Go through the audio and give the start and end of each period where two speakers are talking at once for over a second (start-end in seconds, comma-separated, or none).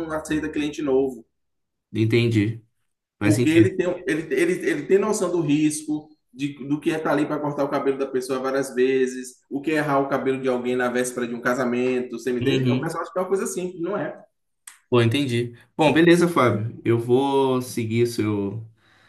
none